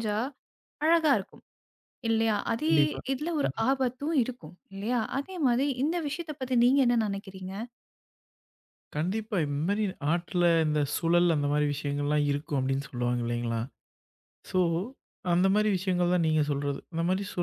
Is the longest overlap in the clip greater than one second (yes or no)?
no